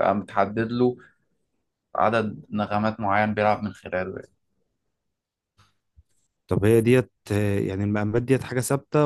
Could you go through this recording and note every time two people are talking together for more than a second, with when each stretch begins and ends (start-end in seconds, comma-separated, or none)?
none